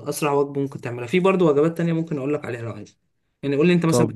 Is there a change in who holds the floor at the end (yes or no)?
no